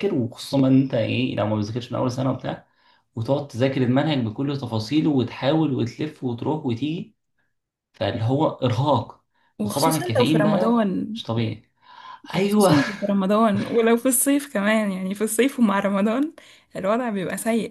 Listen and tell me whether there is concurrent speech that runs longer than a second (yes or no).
yes